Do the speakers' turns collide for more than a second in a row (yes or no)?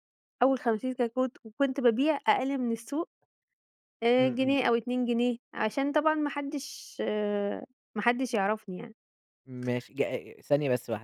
no